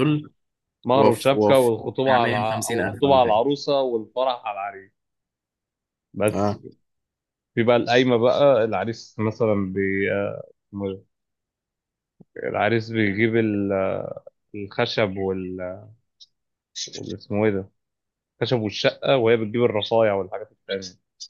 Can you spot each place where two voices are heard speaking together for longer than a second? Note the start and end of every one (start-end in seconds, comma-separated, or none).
0.9-3.4